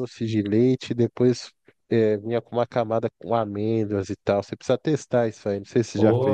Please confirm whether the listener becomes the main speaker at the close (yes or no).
yes